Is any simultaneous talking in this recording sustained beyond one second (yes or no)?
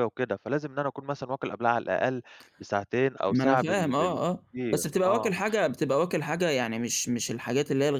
yes